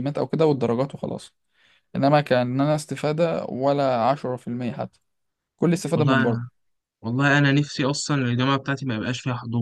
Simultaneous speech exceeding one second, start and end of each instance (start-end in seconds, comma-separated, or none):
none